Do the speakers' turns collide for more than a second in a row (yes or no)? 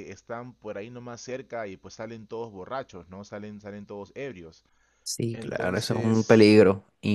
yes